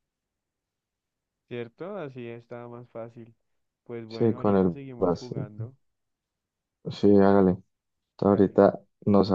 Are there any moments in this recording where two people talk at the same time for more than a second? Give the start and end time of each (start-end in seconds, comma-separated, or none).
4.1-5.5